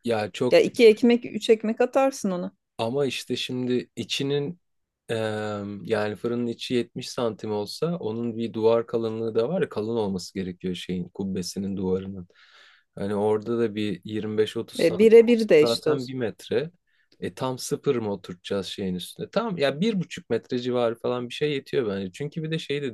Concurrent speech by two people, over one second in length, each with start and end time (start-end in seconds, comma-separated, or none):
14.8-16.2